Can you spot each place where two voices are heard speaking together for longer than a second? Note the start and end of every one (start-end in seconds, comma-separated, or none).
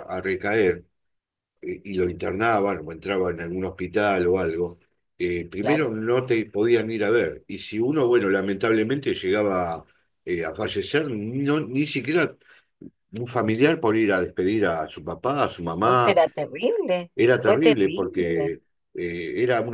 17.2-18.5